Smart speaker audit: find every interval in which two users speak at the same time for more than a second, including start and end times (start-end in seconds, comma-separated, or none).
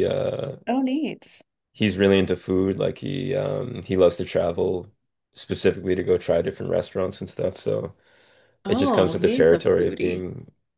8.7-10.2